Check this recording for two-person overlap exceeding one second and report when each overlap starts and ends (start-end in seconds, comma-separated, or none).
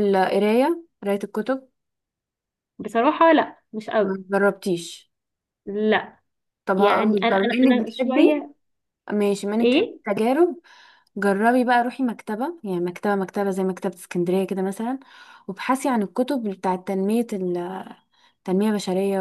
6.8-8.4